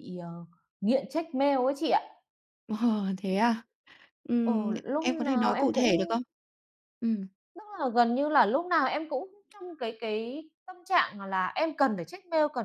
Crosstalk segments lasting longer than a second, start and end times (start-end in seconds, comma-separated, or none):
4.4-6.2